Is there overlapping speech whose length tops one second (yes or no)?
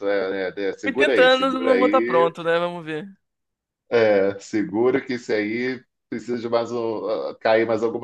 yes